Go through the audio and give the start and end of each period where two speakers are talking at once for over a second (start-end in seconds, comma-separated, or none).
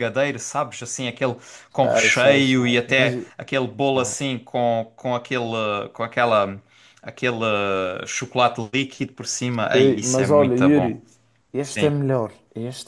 1.8-3.1, 9.7-11.0